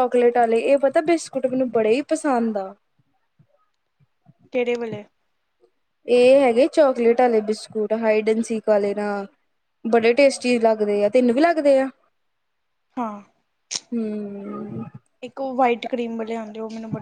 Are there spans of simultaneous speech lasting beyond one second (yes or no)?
no